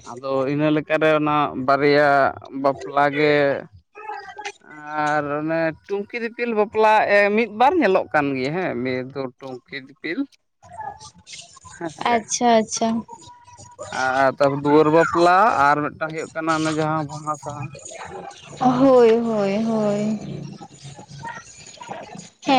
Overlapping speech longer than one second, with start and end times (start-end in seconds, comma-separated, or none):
none